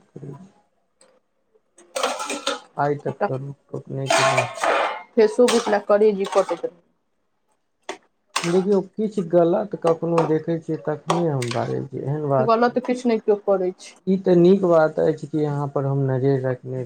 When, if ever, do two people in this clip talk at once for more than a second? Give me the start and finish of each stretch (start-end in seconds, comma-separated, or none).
none